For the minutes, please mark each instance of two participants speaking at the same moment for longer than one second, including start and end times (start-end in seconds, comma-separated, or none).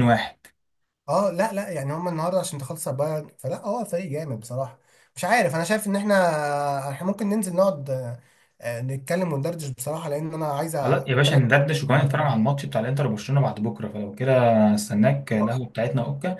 10.8-12.3